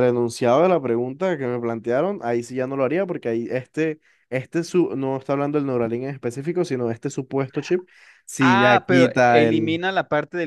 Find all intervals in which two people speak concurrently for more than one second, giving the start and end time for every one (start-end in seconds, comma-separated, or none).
8.4-9.8